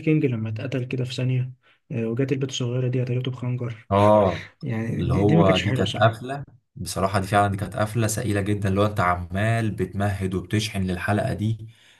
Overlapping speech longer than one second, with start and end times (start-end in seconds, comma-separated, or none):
5.0-6.2